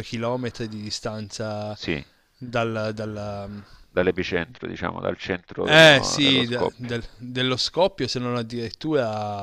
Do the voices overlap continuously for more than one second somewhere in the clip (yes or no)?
yes